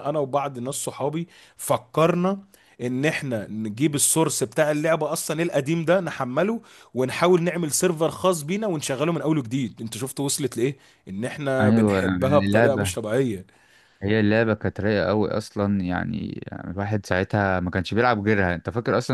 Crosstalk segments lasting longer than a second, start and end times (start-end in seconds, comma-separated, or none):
11.6-12.9